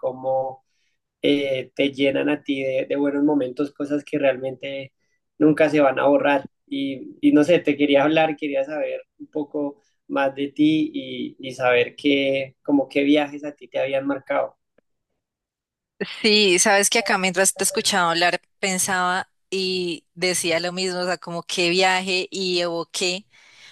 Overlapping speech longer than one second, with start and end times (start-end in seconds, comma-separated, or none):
none